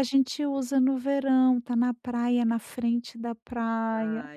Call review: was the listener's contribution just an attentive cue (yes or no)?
no